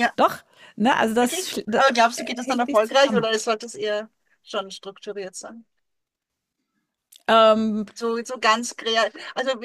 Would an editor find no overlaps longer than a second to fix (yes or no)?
no